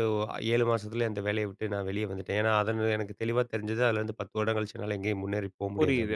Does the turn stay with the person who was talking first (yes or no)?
no